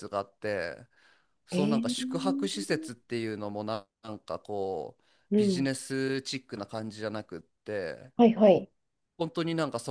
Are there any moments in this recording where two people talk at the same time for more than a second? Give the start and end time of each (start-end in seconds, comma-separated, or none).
1.5-2.8